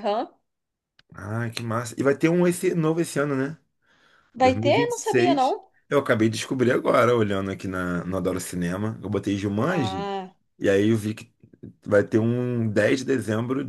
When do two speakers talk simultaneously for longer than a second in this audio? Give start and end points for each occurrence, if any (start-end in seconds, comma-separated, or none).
4.4-5.7